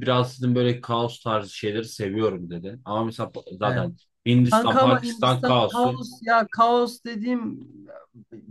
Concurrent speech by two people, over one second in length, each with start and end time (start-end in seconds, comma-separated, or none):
4.5-6.0